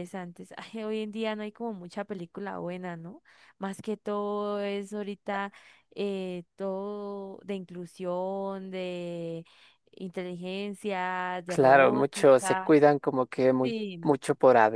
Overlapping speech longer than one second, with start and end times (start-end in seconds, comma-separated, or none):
11.5-12.7